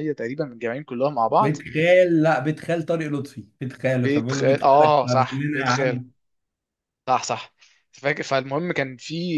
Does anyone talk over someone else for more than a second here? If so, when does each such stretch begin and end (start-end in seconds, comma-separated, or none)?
4.0-6.0